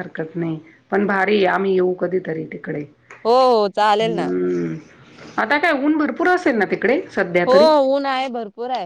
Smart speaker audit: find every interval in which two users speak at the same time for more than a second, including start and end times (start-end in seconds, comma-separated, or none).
none